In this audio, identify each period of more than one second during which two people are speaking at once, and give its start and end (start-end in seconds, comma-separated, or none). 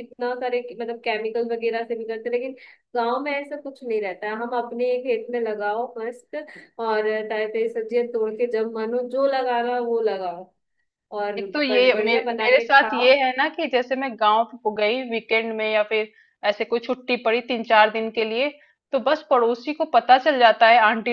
11.4-13.1